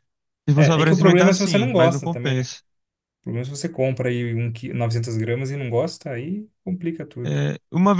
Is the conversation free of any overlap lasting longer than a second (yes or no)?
no